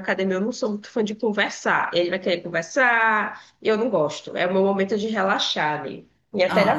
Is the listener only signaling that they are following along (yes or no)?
no